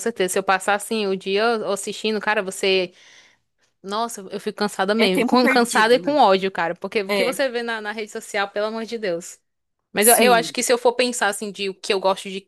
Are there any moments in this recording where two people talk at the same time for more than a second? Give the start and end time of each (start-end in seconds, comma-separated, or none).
5.0-6.2